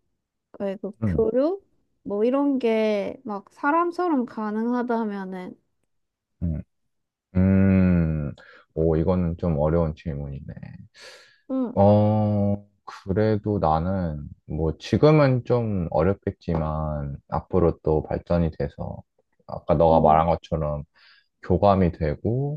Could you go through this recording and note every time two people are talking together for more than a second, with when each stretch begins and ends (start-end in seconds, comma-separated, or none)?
none